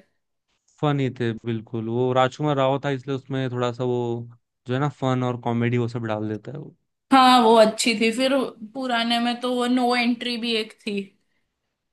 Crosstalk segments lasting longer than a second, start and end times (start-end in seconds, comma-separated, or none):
none